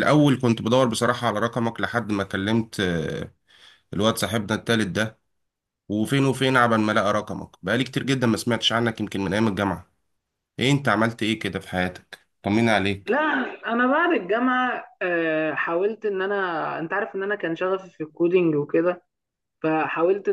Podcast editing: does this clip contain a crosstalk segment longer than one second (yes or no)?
no